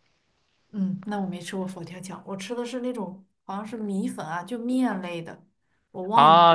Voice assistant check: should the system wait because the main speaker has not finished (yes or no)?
no